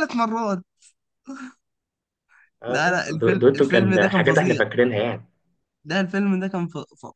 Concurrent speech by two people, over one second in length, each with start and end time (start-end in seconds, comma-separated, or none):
2.7-4.6